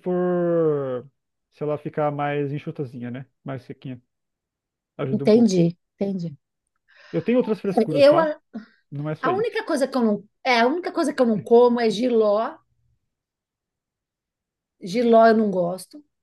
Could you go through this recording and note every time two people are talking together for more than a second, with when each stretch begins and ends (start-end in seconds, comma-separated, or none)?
none